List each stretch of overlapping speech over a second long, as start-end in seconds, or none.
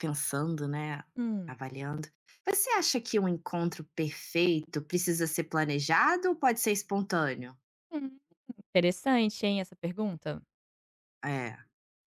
none